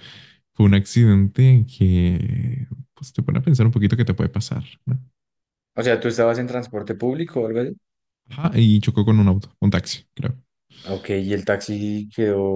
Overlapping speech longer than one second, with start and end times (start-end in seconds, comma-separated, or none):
none